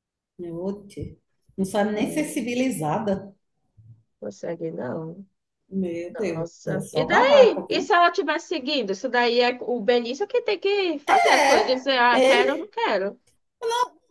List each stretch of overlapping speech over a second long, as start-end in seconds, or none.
6.3-7.9, 11.3-12.7